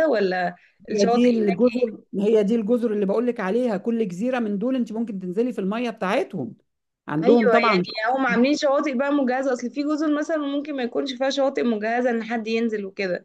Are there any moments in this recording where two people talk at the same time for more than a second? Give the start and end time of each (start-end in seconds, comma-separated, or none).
none